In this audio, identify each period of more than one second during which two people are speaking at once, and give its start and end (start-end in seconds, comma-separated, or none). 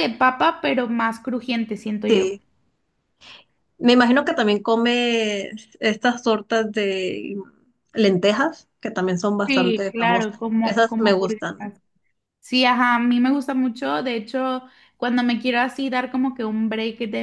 9.5-11.7